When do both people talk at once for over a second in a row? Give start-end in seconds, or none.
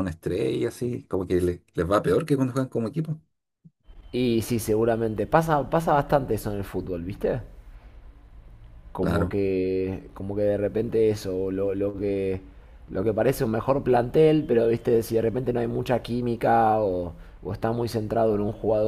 none